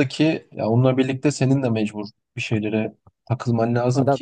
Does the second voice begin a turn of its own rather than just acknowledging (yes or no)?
no